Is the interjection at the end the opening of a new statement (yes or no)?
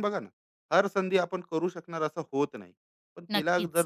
no